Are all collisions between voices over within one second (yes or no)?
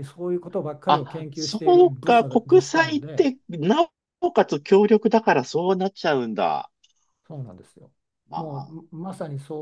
no